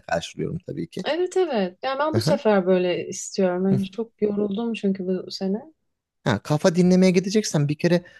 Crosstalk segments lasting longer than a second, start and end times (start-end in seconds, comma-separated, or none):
none